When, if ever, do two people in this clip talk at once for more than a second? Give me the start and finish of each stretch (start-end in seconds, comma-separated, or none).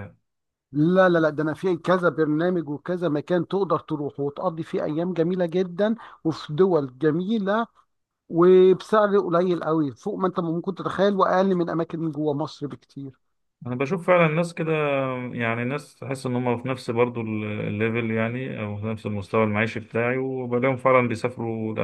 none